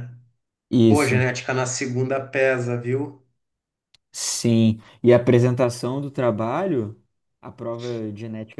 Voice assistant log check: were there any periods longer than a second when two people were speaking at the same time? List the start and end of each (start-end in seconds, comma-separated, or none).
none